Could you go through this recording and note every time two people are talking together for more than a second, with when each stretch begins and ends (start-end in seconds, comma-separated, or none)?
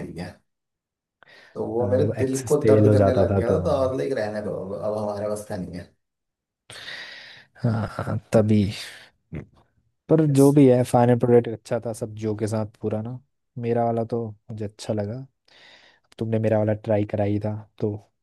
1.8-3.6